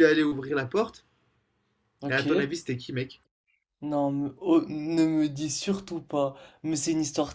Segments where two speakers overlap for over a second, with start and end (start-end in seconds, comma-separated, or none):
none